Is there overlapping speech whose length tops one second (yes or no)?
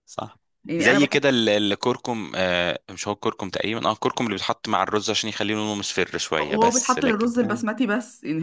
yes